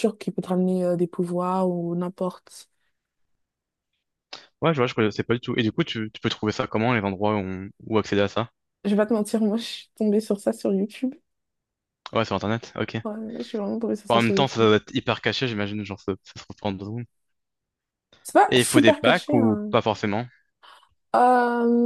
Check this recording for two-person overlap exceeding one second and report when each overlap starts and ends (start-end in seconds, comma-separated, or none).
18.5-19.7